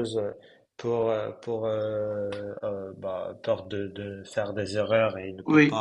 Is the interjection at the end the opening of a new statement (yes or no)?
no